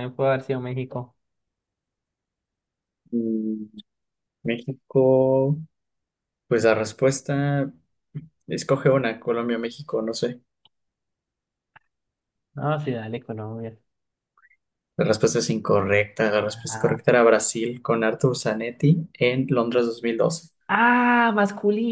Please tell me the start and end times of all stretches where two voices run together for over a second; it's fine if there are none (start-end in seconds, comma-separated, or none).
none